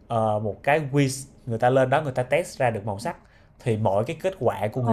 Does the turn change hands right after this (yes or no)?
no